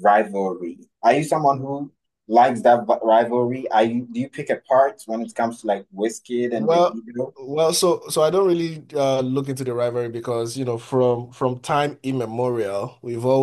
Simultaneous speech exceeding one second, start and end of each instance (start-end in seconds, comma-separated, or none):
none